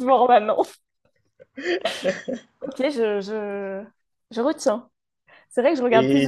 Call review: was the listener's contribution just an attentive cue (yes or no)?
yes